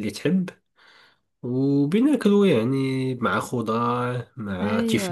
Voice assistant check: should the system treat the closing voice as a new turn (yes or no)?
no